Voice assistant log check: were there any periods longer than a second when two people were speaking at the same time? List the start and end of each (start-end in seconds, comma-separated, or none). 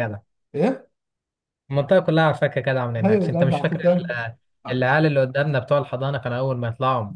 3.0-4.2